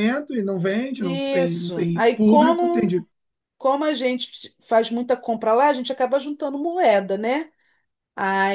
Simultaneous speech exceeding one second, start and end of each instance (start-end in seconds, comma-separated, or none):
1.0-3.0